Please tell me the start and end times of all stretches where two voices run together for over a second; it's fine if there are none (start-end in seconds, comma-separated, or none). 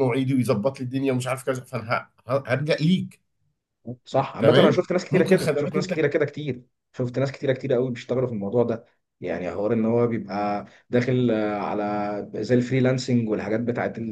4.4-5.9